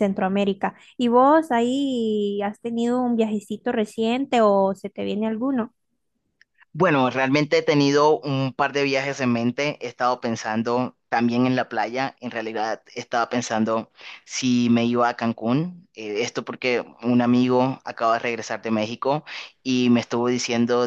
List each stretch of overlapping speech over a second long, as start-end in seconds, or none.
none